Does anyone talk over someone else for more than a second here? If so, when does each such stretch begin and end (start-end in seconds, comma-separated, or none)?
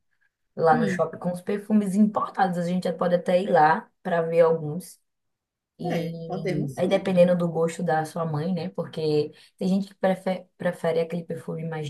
5.8-7.2